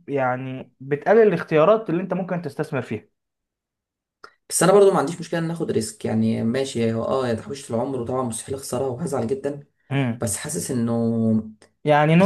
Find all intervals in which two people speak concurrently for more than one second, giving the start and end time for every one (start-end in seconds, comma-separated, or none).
none